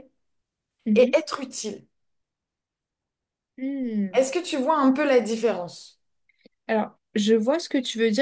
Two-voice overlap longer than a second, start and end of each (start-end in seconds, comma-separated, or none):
none